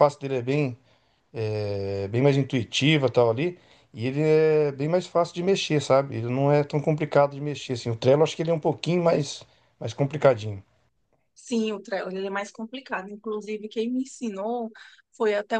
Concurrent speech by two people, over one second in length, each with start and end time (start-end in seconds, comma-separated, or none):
none